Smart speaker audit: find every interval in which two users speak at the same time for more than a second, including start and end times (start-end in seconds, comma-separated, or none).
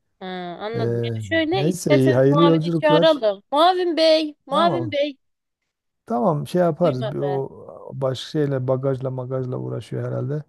1.5-3.2